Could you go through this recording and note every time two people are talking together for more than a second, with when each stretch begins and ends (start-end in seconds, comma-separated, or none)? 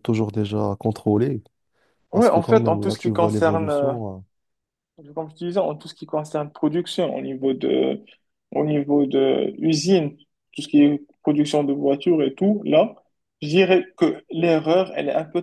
2.1-3.9